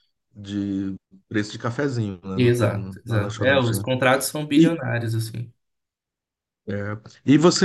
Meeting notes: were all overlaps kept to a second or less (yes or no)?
no